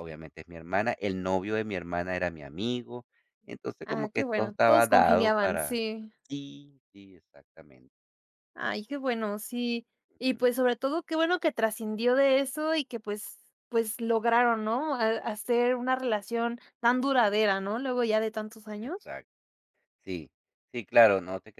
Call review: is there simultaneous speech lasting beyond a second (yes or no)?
yes